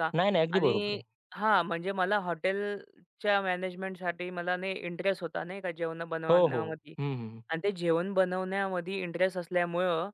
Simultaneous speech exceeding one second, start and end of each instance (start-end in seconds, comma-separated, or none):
none